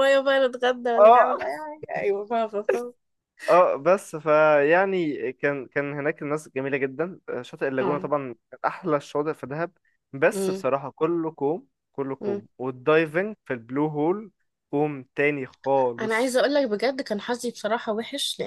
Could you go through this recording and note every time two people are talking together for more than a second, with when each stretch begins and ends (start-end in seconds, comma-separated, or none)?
none